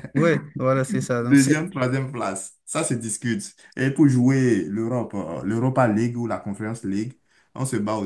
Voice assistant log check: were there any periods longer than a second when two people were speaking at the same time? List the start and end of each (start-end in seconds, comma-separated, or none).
none